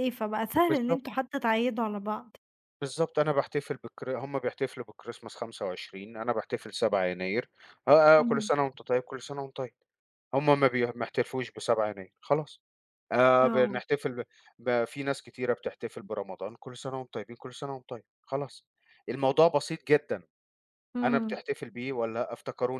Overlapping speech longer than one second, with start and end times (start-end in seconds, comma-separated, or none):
none